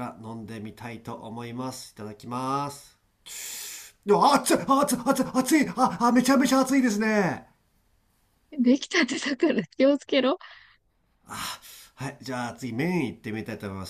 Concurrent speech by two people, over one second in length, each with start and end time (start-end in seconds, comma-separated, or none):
none